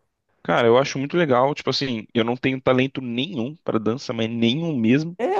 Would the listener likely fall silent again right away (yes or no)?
no